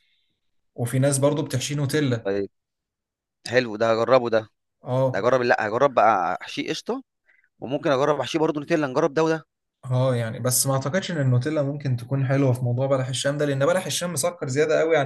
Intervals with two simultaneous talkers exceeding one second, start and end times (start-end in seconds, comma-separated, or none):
none